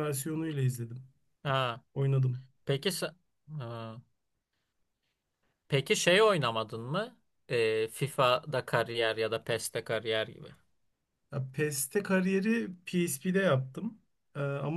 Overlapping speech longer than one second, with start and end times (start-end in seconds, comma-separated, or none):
none